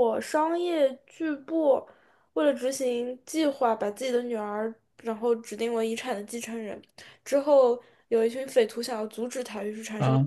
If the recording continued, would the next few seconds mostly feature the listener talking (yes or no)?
no